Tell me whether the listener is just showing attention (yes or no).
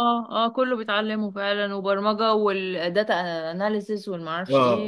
no